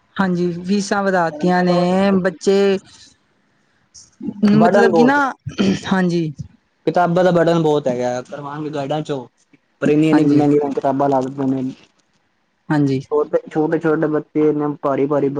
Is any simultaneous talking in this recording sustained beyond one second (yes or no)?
no